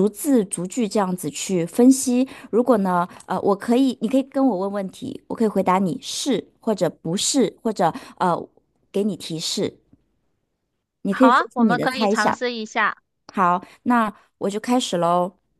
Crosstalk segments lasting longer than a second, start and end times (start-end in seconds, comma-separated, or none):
11.1-12.4